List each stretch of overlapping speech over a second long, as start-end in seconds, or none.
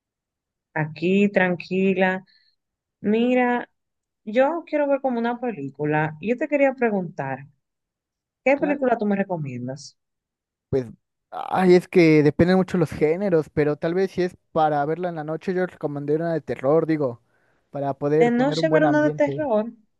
18.2-19.5